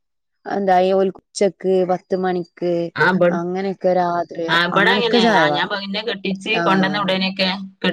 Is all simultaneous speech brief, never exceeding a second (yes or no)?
no